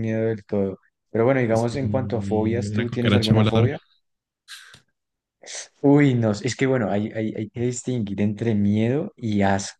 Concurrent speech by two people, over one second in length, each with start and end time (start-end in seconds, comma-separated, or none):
1.5-3.7